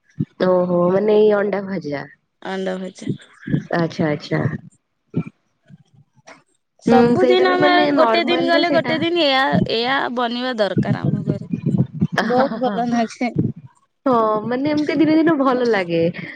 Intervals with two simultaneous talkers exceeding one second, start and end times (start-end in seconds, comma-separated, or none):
6.9-8.9